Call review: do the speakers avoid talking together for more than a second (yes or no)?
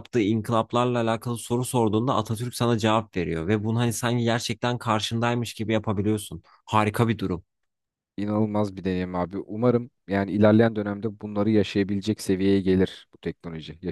yes